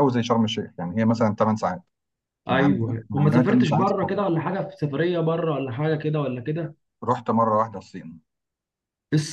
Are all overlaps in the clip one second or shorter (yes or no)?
no